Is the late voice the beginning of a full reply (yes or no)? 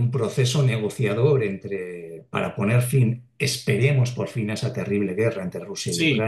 yes